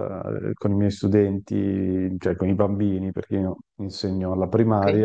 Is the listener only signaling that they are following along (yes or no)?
yes